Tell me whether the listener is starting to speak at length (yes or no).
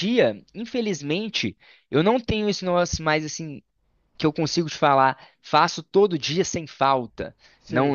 no